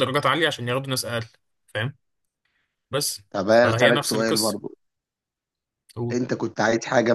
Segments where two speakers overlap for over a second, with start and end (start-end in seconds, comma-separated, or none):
3.3-4.6